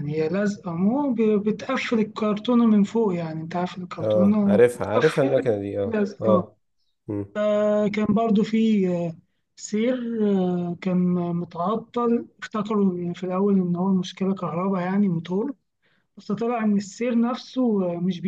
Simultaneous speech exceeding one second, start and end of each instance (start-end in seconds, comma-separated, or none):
4.0-6.5